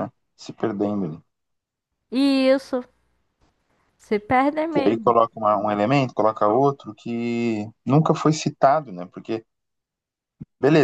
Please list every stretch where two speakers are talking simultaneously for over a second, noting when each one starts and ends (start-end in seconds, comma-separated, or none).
none